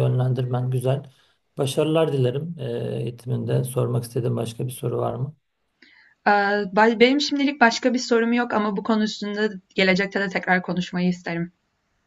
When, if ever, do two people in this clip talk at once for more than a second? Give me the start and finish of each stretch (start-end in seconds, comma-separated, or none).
none